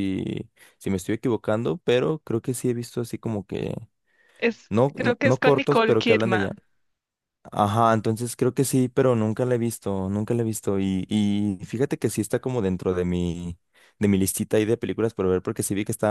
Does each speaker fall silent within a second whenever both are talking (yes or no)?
no